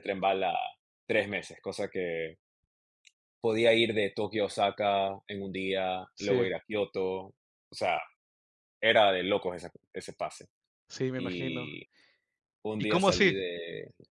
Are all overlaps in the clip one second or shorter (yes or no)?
yes